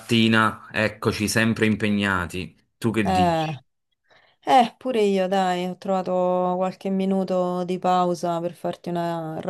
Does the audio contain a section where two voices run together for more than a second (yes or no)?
no